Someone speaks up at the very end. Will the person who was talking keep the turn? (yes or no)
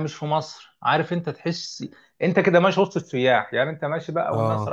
yes